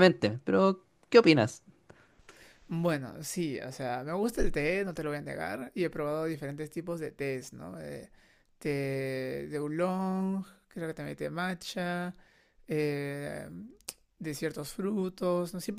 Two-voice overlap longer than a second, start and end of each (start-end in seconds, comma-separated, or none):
none